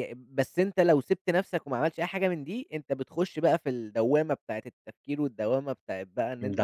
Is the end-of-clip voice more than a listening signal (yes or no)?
no